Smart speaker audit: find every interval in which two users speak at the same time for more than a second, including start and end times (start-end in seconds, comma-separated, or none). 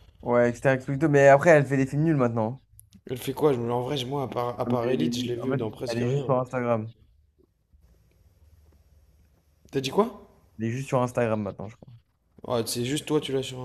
4.6-6.4